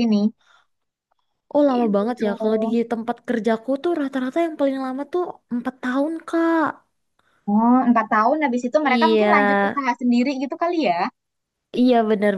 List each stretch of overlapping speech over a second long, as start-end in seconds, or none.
none